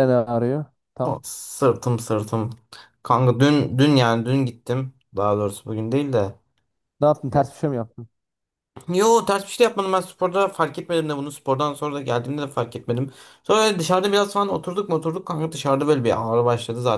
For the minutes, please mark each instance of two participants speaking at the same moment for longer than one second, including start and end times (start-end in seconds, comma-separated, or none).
none